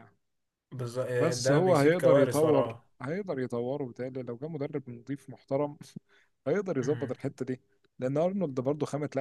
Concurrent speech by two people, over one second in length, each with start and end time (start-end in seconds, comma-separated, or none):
1.4-2.9